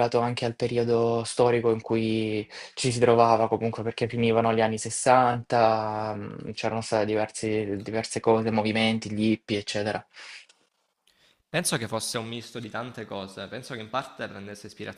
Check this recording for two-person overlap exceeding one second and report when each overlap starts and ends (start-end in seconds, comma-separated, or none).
none